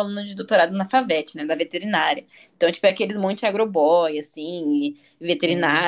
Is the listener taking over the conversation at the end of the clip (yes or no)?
no